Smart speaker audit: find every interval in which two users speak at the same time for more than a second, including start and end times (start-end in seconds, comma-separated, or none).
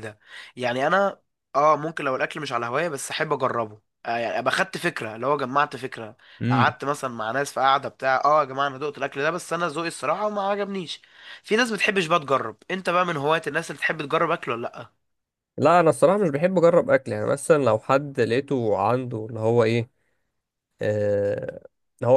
none